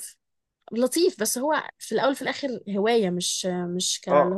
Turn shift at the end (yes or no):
yes